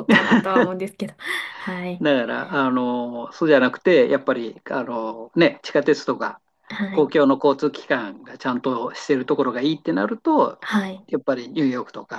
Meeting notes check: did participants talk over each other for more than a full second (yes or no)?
no